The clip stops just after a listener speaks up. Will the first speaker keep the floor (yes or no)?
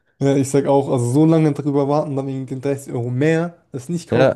no